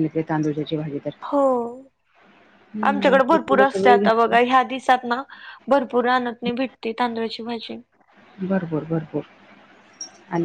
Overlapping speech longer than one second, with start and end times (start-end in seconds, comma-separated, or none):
2.9-4.4